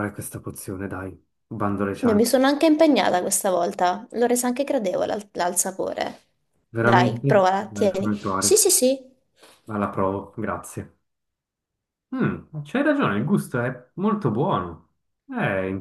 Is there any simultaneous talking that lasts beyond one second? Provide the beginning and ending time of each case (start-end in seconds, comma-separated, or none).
6.8-8.7